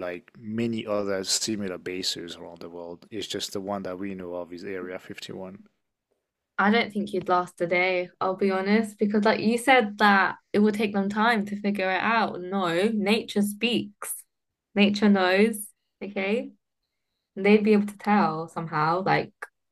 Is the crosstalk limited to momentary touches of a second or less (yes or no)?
yes